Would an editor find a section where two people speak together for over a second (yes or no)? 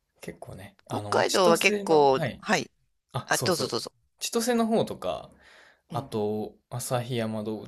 yes